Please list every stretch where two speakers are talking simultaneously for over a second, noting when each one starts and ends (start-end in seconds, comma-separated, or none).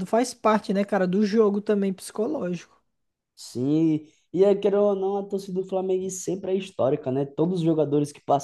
none